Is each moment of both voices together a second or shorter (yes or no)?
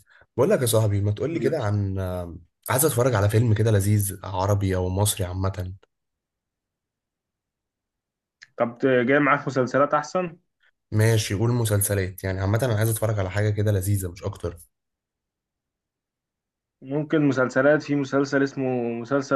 yes